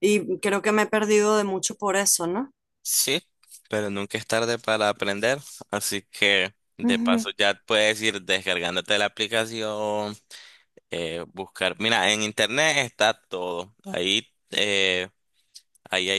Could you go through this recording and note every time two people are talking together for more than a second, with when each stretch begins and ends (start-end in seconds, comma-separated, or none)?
none